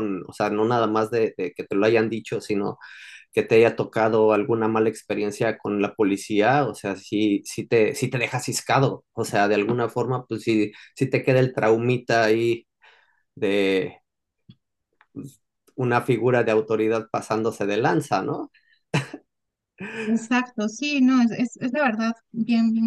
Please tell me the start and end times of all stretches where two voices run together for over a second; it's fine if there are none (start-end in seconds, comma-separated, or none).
none